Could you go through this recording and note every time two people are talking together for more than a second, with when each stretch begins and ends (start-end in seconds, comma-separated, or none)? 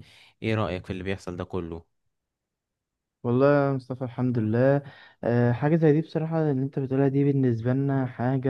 none